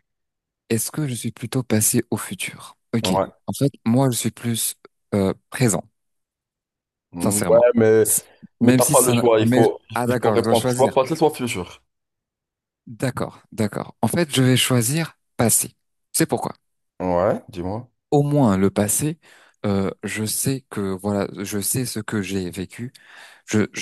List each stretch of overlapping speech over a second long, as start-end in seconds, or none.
8.6-10.9